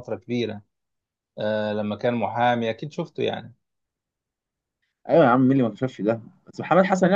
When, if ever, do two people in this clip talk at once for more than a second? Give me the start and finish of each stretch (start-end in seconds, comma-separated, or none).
none